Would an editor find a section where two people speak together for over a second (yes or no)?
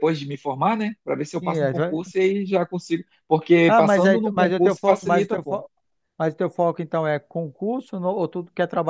yes